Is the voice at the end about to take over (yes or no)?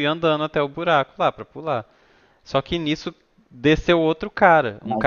no